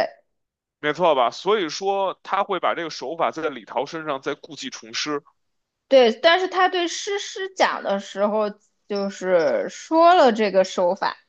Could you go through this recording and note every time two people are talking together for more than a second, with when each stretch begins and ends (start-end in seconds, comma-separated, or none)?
none